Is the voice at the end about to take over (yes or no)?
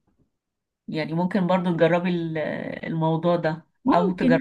no